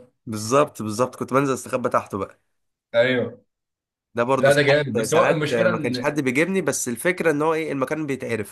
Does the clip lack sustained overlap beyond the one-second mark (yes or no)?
no